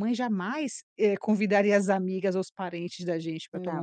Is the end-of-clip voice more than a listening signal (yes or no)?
no